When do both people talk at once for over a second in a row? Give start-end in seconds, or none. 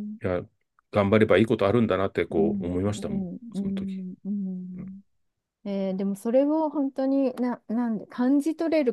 2.3-4.0